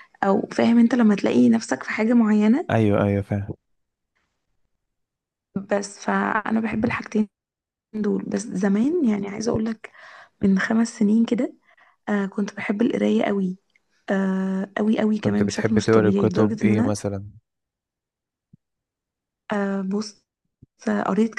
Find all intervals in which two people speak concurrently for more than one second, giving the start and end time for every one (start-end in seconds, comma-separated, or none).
15.2-16.9